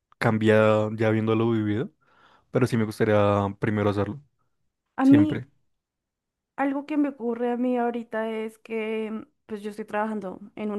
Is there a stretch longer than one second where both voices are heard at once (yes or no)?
no